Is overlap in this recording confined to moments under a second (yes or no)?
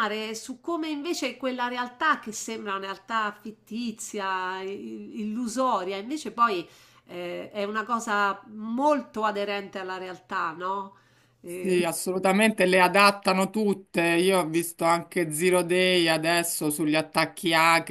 yes